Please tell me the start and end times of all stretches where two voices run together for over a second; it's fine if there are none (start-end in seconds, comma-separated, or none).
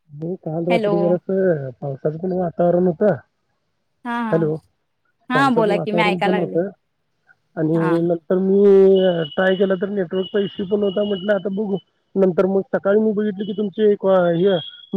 5.3-6.5